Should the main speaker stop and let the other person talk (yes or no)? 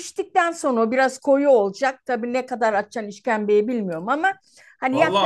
yes